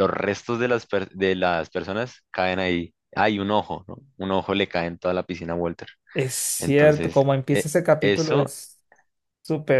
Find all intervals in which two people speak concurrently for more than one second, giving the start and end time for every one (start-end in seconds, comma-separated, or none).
6.6-8.6